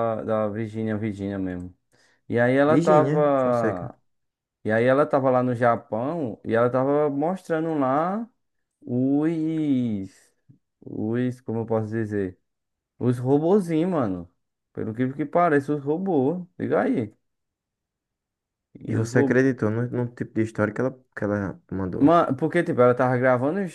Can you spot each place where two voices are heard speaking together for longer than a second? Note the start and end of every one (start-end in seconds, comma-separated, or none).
2.6-3.9